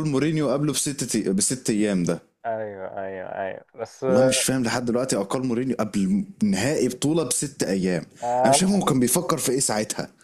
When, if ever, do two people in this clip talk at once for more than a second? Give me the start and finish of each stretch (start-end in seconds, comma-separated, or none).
none